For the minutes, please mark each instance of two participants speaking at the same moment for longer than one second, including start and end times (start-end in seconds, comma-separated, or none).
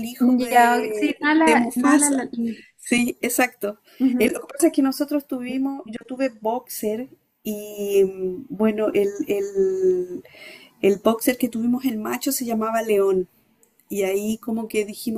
0.5-2.3